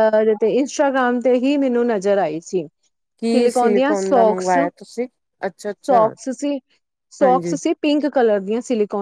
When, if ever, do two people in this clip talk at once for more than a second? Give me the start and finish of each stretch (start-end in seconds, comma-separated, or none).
3.2-4.5